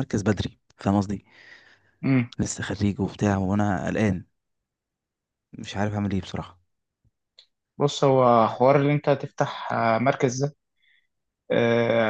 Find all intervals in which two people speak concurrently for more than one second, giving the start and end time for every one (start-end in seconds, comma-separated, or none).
none